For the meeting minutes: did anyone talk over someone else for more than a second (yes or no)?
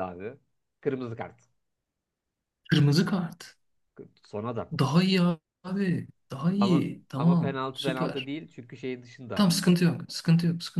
yes